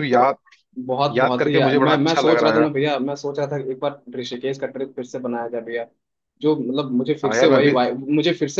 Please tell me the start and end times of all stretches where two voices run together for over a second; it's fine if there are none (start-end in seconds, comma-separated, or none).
1.2-2.7